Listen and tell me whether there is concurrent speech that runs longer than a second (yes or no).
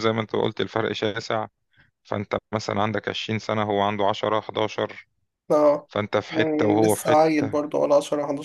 yes